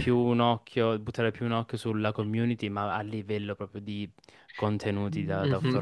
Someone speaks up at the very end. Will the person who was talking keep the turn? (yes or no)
no